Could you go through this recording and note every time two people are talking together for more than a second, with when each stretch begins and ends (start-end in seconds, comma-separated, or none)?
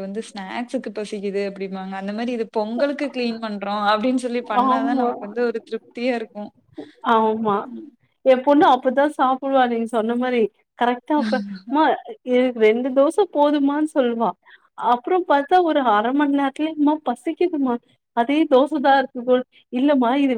none